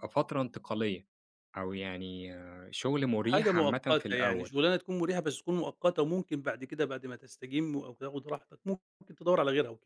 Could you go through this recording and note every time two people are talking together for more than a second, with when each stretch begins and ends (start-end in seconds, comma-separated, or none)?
3.2-4.5